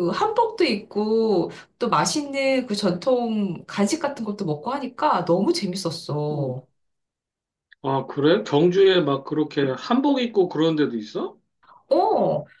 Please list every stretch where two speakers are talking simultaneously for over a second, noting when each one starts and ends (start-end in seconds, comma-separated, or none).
none